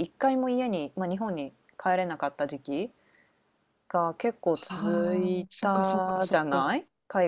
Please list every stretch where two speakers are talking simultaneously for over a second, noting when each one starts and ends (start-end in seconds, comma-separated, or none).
4.5-6.6